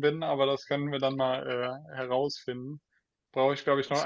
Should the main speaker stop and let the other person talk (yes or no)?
no